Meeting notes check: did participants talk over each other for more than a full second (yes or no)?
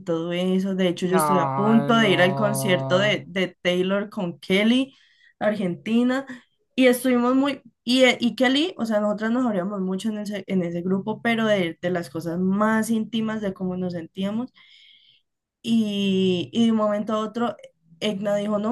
yes